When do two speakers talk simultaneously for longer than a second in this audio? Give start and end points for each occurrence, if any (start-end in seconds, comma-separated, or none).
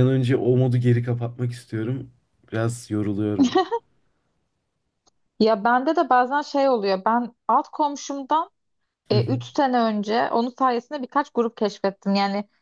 none